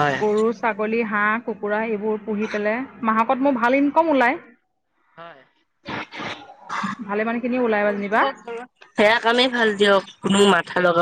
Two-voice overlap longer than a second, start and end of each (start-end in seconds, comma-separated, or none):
none